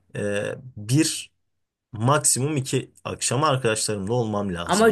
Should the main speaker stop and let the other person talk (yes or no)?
yes